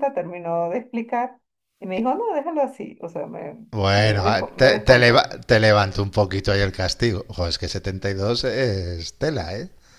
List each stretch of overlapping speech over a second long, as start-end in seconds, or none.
4.0-5.3